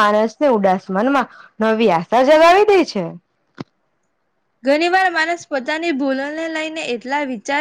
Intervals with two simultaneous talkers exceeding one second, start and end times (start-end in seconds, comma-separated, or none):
none